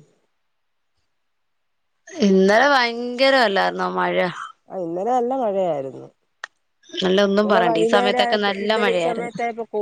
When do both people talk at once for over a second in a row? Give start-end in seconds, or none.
7.4-9.3